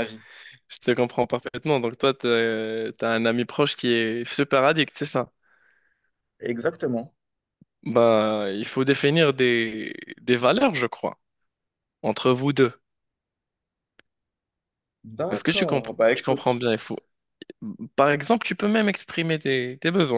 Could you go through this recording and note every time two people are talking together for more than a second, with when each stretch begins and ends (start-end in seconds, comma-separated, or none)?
15.3-16.7